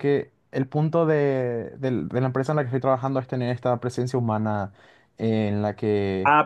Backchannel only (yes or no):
no